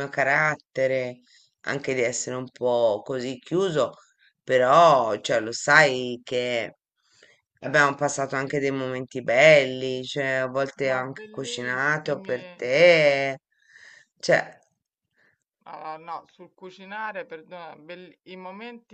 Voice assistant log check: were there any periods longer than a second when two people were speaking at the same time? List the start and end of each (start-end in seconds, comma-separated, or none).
10.9-12.4